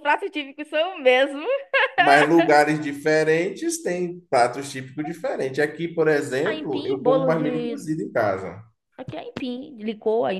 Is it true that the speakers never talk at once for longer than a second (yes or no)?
no